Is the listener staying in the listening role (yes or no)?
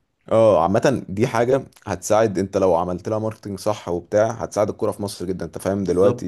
no